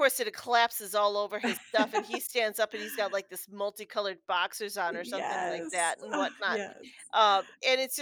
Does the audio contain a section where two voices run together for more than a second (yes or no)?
yes